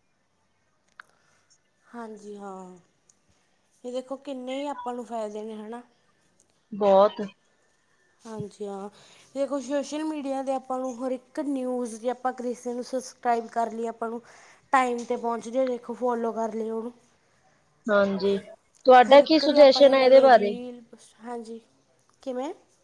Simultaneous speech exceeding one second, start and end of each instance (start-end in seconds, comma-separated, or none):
19.1-20.6